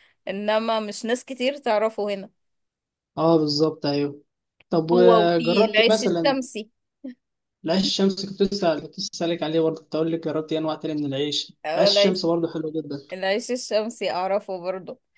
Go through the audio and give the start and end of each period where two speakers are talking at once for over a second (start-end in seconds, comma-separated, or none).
4.9-6.3